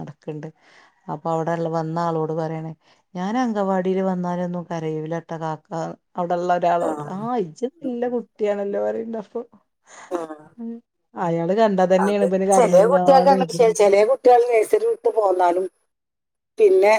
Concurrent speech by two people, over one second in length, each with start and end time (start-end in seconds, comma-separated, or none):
12.1-13.8